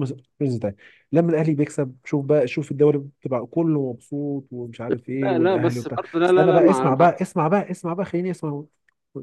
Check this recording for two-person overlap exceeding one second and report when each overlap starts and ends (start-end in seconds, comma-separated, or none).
5.2-7.1